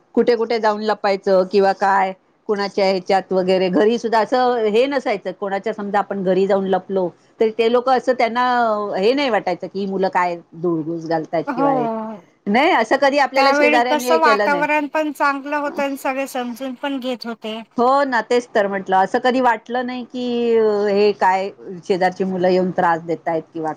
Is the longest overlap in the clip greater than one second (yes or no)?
yes